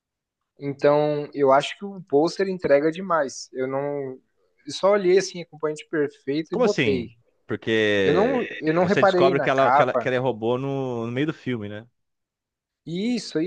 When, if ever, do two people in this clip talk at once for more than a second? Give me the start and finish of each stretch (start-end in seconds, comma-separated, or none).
8.0-10.1